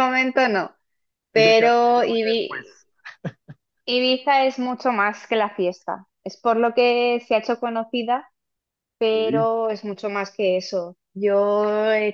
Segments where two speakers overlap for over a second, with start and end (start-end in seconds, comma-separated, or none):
1.3-2.7